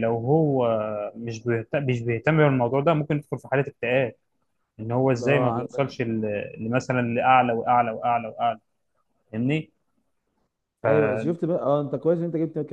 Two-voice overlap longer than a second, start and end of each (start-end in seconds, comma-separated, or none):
none